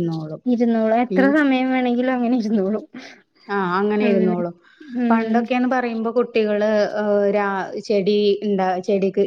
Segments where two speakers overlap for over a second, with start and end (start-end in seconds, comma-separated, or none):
none